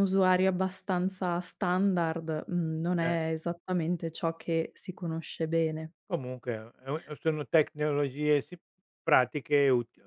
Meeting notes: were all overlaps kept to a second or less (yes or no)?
yes